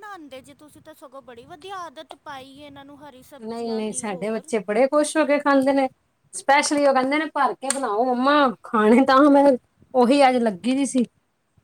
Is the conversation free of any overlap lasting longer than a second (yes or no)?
no